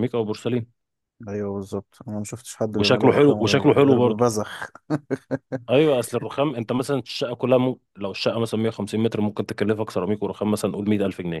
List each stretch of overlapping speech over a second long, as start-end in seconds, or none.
2.7-4.2